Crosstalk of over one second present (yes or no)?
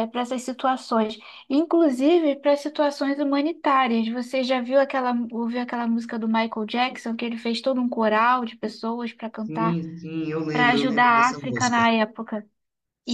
yes